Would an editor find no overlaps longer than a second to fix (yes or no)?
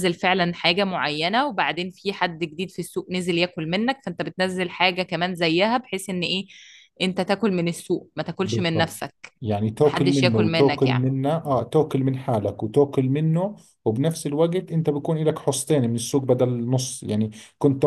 no